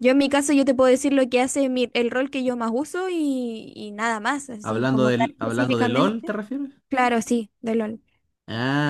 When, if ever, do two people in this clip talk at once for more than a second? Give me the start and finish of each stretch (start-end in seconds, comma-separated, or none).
4.6-6.4